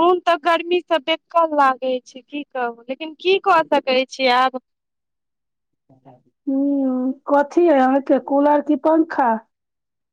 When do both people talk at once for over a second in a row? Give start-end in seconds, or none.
none